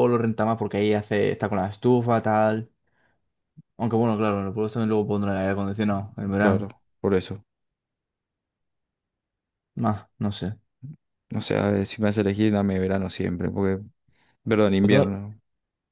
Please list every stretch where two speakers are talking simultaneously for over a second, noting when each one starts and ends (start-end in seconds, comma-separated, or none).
none